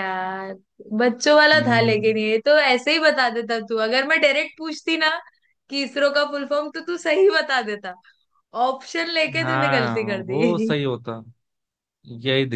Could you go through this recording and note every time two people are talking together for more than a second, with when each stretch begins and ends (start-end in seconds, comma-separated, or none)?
9.4-10.7